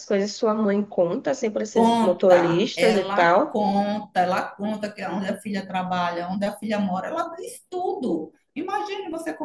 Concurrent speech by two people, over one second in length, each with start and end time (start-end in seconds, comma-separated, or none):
1.7-3.6